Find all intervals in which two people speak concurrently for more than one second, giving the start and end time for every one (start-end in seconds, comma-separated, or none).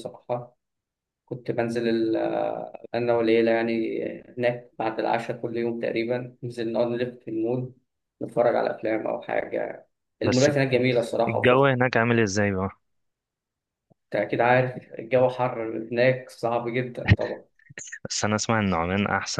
none